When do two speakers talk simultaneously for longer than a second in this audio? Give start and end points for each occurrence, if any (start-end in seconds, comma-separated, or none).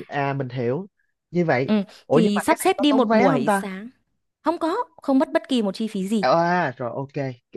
1.6-3.6